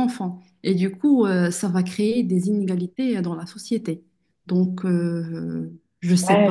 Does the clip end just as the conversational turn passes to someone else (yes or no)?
yes